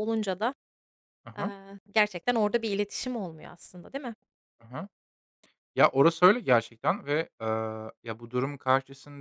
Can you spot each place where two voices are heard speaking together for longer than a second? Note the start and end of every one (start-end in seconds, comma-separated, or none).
none